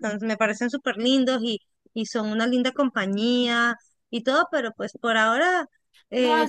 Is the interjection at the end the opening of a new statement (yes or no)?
yes